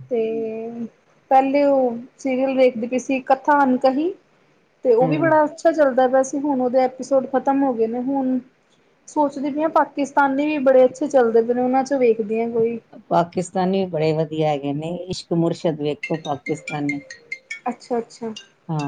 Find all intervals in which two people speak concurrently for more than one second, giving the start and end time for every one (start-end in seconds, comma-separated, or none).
none